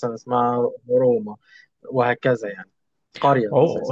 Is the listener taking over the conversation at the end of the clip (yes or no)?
yes